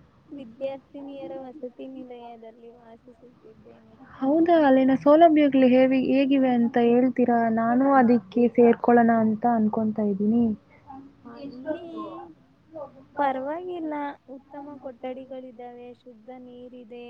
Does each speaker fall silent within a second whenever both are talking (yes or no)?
yes